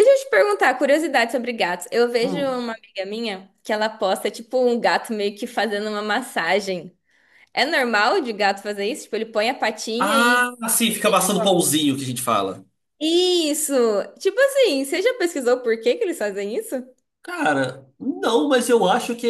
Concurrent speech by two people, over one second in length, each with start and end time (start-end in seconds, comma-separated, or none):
none